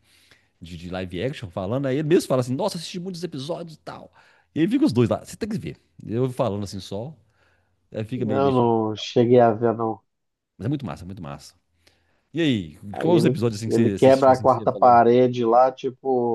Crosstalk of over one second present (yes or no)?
yes